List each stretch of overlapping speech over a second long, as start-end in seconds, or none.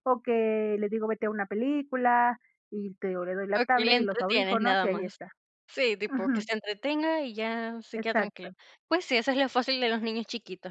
3.6-5.2